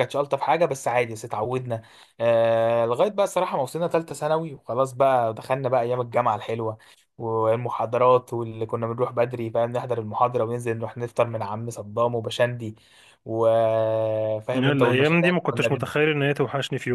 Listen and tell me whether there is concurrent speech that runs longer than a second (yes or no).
yes